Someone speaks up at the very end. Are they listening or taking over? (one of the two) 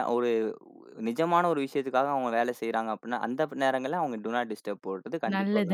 taking over